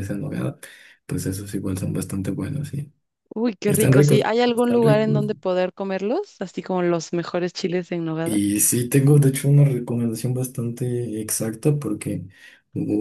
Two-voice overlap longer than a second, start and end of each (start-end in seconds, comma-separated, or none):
3.7-5.2